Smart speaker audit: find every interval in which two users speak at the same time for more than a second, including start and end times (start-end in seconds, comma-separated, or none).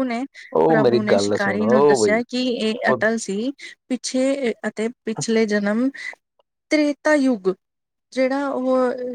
0.7-2.2